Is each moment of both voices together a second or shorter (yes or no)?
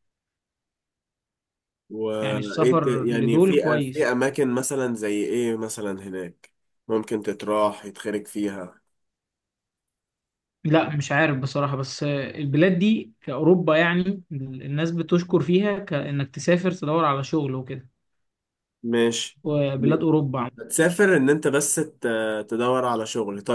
no